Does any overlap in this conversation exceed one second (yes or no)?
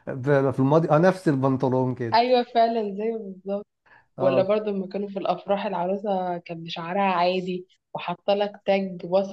no